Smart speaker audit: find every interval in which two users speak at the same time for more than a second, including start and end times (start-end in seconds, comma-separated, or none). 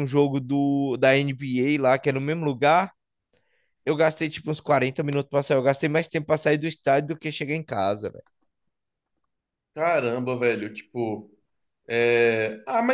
none